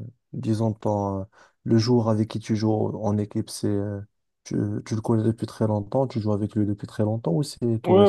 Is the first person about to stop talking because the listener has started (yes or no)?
yes